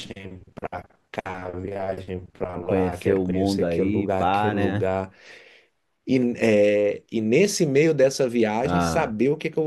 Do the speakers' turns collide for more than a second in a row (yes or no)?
yes